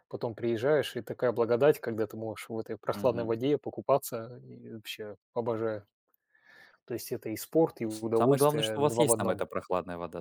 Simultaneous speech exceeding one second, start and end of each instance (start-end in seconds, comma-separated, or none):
7.9-9.4